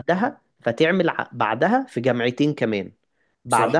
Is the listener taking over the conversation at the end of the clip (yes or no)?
no